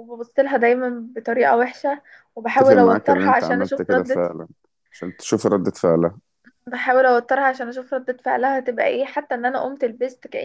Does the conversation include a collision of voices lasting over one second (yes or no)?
yes